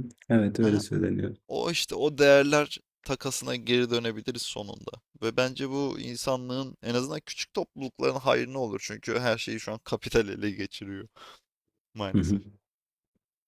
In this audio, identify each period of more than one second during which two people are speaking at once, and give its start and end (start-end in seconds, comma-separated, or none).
none